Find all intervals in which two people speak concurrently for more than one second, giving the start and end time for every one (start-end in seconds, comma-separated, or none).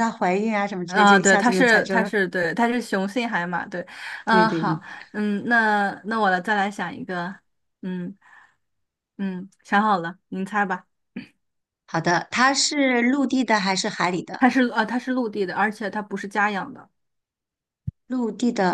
0.9-2.1